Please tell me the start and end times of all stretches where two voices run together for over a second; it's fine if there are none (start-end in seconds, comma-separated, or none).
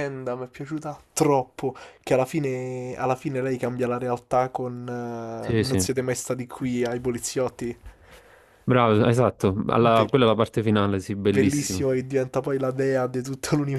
none